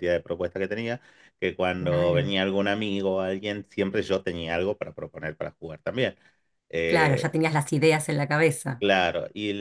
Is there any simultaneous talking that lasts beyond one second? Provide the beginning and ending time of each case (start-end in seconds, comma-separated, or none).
none